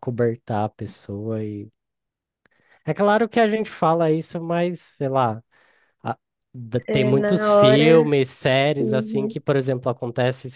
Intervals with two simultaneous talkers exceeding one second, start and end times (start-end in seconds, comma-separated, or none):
6.9-8.2